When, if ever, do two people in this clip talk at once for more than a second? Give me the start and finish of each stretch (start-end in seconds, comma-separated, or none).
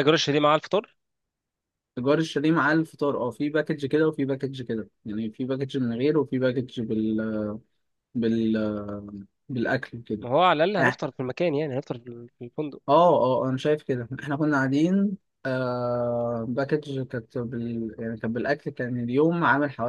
none